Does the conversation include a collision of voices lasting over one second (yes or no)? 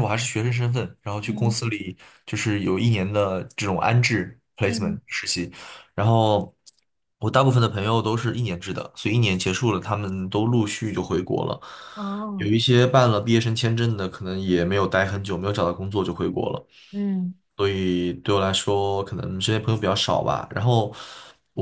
no